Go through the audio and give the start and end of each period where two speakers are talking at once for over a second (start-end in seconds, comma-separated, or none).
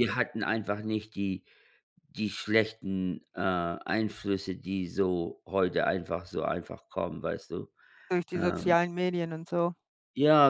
none